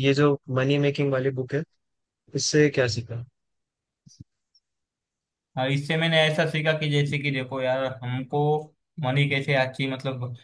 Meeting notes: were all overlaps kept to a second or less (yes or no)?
yes